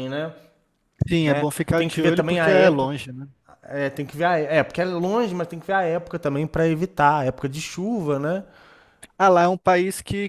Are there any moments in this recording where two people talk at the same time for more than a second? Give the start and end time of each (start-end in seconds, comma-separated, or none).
1.2-3.0